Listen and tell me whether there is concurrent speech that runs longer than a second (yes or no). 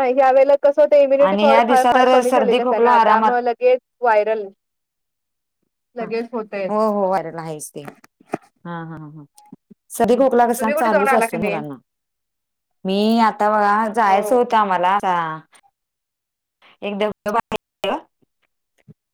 yes